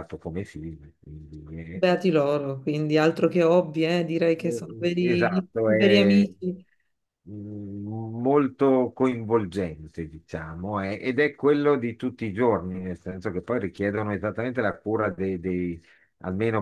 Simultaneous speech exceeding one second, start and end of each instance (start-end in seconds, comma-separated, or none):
4.4-6.3